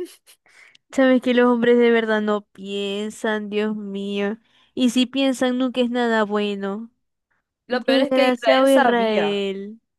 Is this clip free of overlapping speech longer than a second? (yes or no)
no